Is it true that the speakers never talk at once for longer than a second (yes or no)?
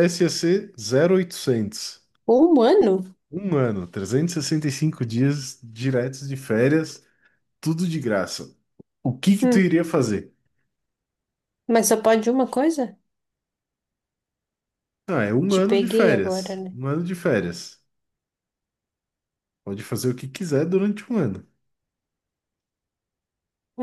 no